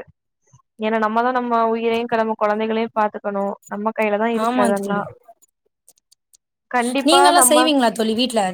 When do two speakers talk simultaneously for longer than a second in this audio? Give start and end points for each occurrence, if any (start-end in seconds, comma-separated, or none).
none